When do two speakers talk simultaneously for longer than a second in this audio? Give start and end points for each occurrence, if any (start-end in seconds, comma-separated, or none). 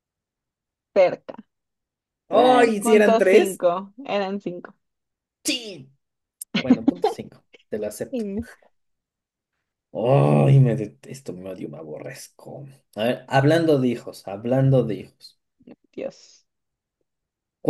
2.3-3.6